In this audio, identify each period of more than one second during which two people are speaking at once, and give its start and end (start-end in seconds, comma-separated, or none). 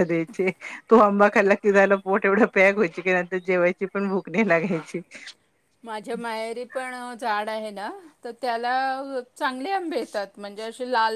none